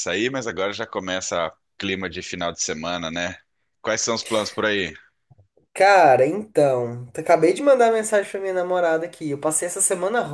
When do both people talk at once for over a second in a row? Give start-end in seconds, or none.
none